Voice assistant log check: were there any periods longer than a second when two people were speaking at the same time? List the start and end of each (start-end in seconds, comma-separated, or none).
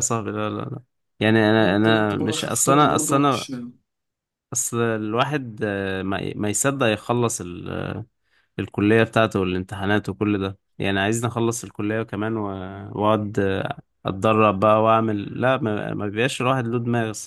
1.6-3.5